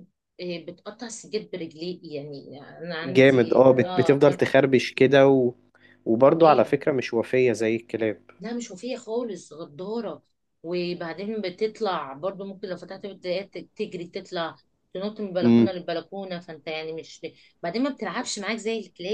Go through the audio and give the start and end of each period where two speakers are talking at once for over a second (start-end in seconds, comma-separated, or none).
3.0-4.4